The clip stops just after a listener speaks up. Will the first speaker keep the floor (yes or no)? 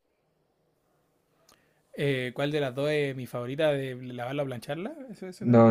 no